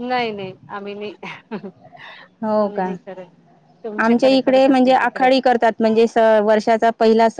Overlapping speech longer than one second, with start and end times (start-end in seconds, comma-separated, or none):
4.0-5.3